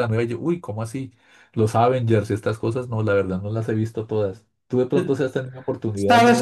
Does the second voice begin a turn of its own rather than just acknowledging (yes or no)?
yes